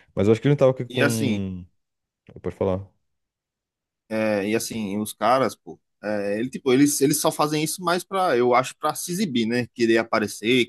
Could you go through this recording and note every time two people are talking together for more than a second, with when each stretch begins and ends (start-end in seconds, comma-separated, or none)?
none